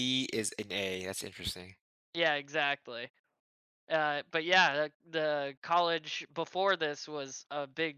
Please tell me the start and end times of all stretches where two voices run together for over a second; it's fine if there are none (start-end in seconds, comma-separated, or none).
none